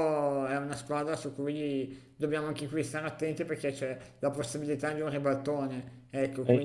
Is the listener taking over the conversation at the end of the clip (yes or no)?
no